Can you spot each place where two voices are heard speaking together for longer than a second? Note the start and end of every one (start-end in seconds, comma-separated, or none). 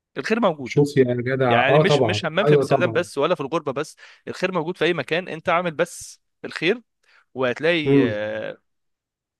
1.5-3.0